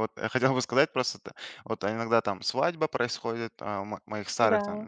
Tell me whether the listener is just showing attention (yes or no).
yes